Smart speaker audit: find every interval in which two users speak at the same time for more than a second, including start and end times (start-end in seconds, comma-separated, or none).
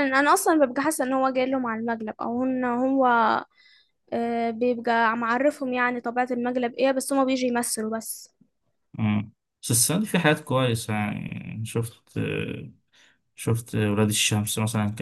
none